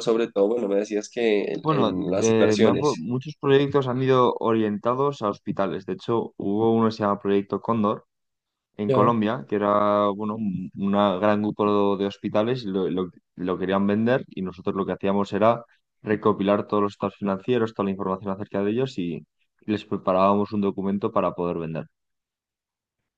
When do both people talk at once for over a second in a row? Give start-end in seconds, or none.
1.6-3.1